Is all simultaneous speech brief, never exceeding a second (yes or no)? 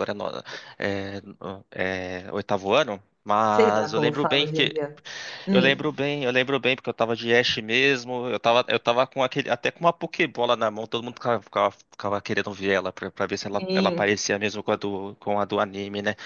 no